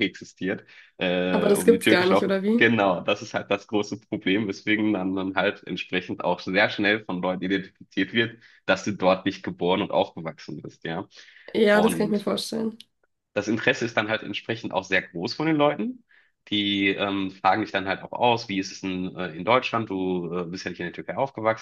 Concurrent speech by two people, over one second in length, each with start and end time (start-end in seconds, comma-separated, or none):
1.3-2.7